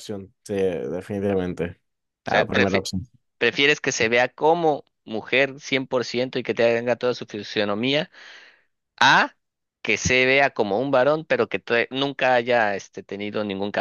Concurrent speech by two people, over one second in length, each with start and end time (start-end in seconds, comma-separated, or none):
none